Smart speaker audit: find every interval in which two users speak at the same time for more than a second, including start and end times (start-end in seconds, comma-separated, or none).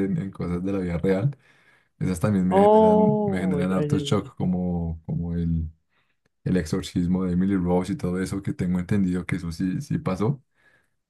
2.5-4.3